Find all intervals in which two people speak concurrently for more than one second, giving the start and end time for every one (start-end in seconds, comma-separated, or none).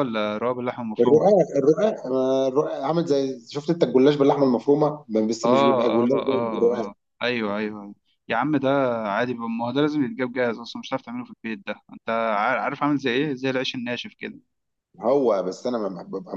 5.4-6.9